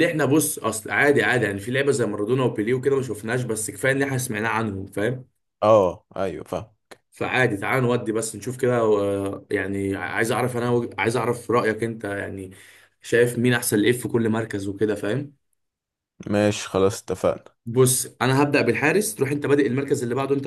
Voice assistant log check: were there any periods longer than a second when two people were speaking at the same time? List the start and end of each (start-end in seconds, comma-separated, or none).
none